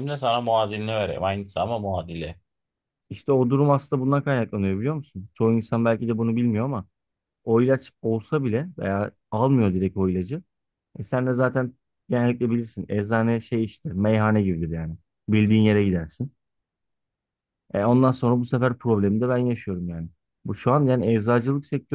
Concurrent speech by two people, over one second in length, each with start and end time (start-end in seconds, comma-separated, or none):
none